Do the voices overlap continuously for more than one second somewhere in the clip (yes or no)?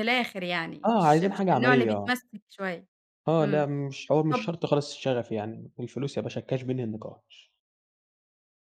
yes